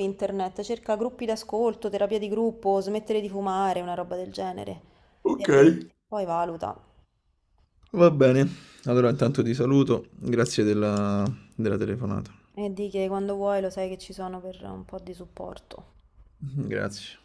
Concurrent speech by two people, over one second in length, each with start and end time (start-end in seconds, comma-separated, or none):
none